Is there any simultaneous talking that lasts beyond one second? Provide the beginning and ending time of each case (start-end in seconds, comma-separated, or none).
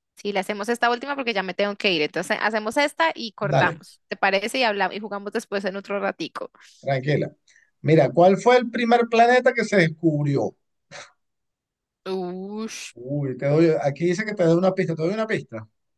none